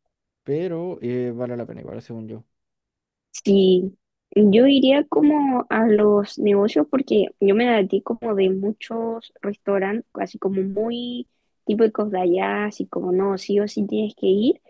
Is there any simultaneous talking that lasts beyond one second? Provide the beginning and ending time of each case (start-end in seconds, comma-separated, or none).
none